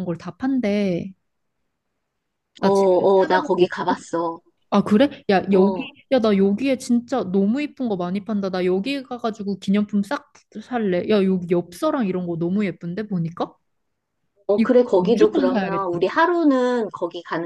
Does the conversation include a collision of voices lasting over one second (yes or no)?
yes